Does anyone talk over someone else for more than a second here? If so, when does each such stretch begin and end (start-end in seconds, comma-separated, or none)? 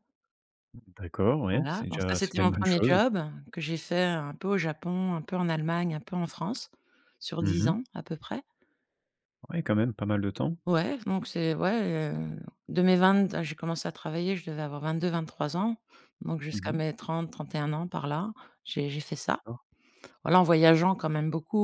1.5-3.0